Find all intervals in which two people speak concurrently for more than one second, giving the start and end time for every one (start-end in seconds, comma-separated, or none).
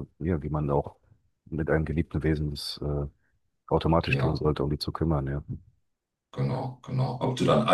none